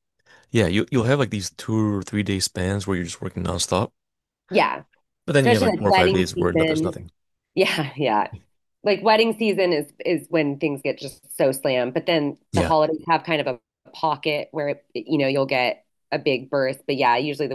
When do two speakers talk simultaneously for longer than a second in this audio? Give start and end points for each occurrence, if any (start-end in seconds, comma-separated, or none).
5.4-7.0